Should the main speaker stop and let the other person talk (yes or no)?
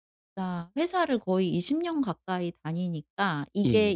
no